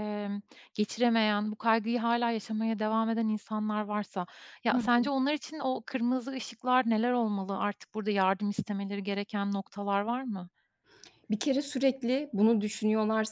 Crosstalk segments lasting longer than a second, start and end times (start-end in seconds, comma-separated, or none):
none